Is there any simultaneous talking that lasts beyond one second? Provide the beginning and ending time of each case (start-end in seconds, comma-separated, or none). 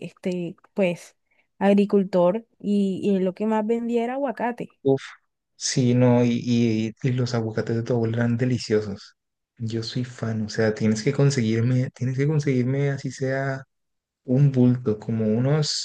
none